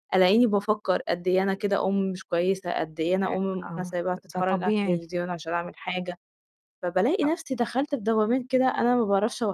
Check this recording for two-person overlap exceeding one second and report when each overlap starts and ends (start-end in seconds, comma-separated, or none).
3.2-5.1